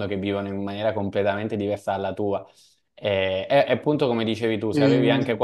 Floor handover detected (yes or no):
no